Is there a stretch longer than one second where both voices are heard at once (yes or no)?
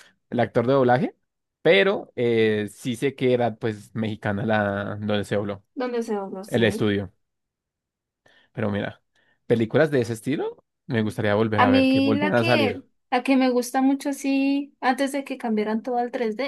yes